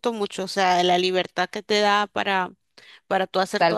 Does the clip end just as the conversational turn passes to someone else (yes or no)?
yes